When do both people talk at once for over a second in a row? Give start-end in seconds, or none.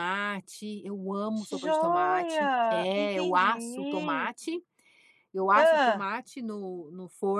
1.6-4.3